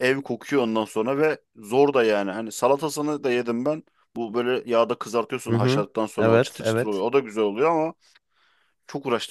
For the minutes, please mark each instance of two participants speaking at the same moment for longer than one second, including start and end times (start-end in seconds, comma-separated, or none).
5.5-7.0